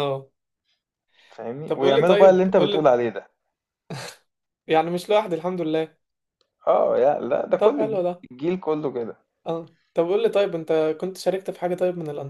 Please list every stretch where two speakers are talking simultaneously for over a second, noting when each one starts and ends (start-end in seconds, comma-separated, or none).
1.7-2.9